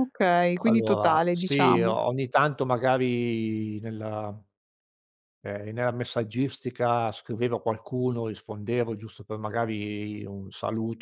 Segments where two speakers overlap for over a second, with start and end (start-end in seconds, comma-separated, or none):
0.6-2.0